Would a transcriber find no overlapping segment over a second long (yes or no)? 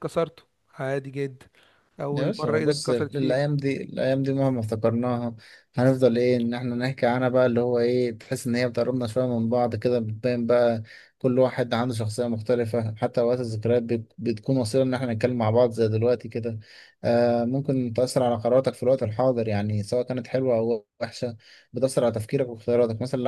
no